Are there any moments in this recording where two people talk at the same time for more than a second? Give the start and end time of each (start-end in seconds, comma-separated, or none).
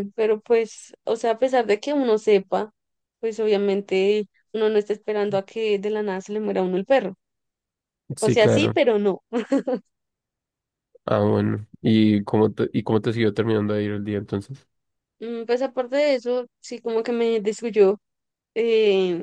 none